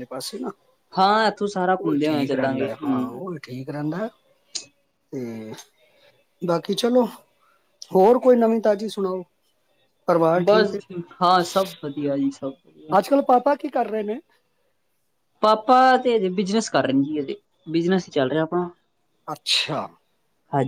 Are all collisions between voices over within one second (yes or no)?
no